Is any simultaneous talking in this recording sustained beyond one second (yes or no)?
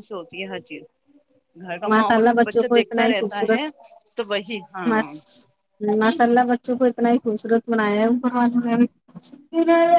yes